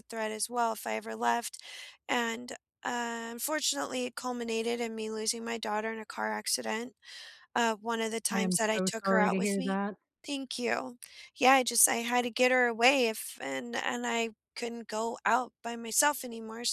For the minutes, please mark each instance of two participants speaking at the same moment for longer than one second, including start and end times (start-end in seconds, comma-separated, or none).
8.3-9.8